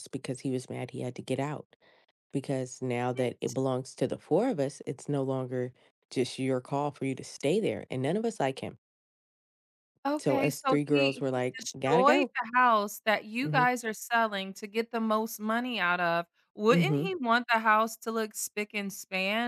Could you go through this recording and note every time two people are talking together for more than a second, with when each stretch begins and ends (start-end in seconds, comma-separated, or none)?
10.2-12.3